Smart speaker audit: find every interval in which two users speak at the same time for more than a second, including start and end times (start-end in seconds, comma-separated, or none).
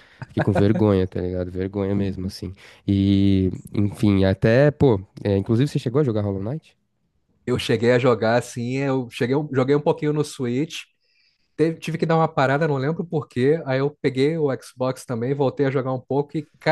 none